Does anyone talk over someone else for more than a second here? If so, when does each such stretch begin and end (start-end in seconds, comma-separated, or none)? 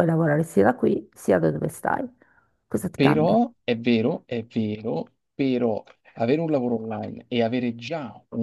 none